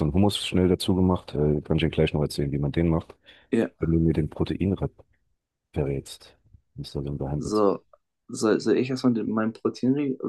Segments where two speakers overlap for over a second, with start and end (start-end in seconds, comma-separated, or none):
none